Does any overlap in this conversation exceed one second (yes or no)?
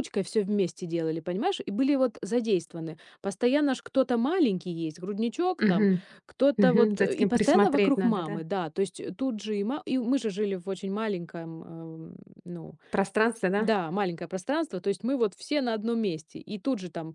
yes